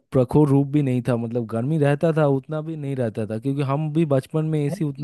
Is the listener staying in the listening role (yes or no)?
yes